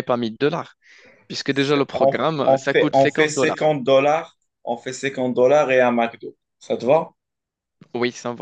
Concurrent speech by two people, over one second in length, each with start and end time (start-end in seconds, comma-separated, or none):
1.5-3.7